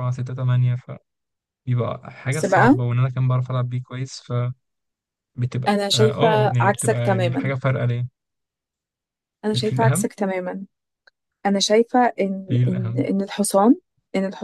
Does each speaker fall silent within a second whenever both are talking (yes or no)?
no